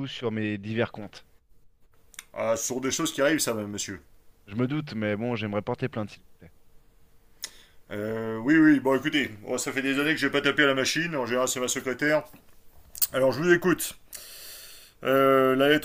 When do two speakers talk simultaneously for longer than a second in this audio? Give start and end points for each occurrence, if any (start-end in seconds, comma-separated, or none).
none